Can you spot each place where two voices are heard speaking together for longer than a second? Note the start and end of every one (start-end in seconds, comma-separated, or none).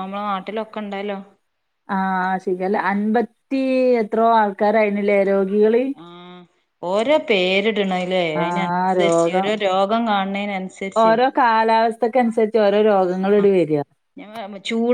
none